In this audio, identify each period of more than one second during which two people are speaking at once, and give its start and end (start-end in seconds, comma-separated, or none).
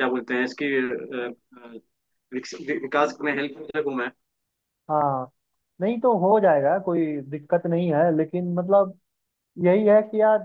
none